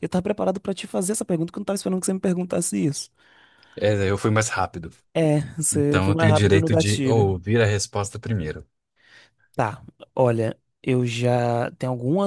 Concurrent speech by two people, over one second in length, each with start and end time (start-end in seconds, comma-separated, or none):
5.7-7.4